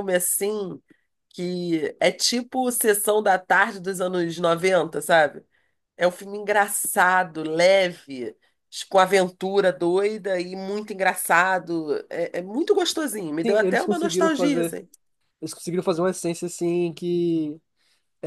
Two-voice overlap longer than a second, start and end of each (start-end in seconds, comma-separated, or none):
13.4-14.8